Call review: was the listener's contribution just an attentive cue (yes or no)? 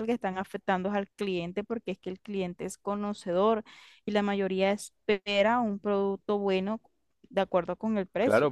no